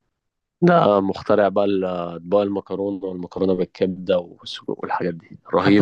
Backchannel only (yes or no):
no